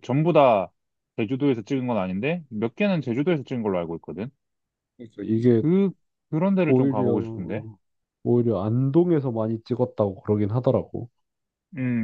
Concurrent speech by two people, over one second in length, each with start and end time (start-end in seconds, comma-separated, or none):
none